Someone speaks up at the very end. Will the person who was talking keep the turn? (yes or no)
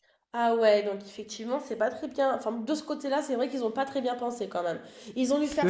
yes